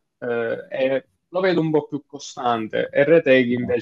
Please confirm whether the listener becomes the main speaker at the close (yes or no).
no